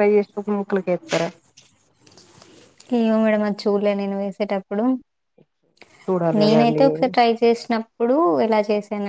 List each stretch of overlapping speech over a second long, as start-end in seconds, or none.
none